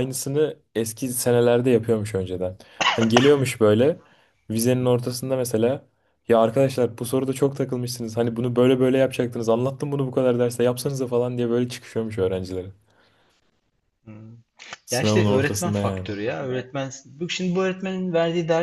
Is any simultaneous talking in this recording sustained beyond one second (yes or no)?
yes